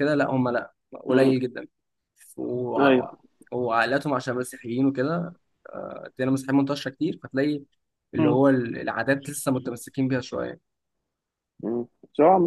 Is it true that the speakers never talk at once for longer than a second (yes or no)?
yes